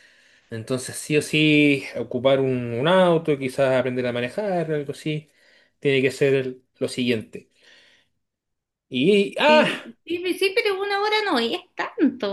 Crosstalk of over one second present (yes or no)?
no